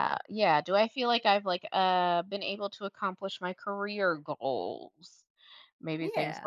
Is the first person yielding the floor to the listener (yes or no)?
no